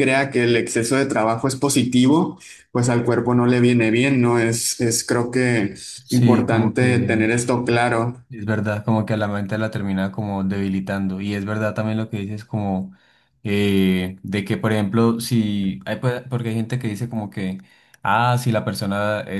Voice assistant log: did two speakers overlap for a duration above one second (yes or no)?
yes